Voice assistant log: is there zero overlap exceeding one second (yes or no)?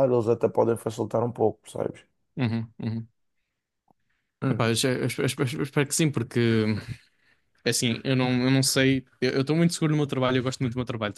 yes